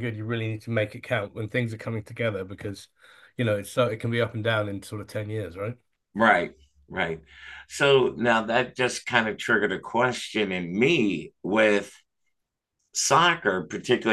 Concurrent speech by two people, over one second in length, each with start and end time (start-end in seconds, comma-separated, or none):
none